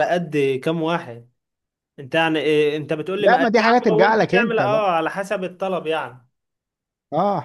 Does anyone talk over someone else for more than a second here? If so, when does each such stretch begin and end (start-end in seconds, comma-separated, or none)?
3.2-4.9